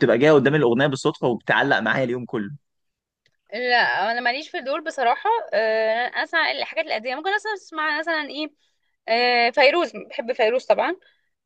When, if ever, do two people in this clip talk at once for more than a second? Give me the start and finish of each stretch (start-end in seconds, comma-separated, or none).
none